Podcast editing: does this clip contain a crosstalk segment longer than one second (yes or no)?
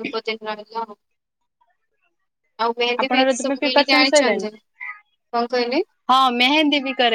yes